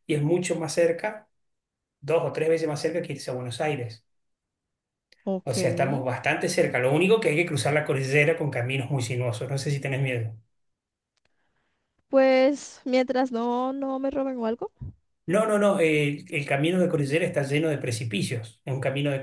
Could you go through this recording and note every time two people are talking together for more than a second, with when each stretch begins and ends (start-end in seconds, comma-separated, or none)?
none